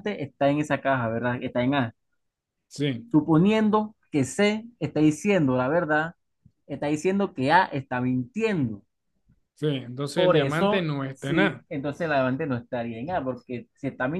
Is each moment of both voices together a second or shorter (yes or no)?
no